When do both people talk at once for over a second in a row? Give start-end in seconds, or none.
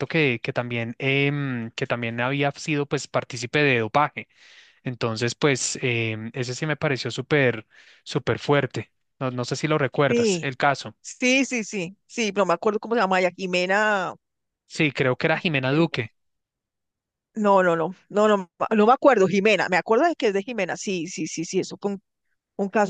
none